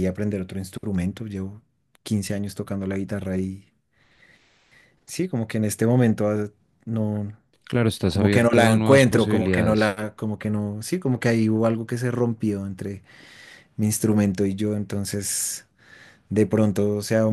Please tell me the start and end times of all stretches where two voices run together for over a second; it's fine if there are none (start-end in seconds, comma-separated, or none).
8.1-10.0